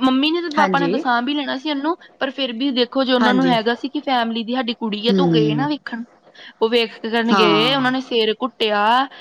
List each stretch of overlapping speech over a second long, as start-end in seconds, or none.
none